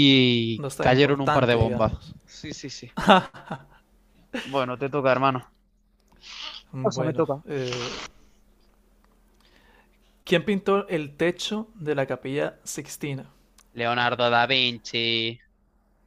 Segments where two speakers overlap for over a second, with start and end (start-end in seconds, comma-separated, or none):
0.6-2.1